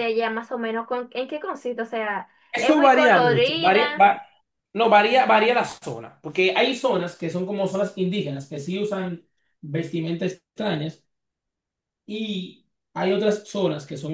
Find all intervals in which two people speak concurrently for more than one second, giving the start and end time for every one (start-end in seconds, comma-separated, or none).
2.5-4.1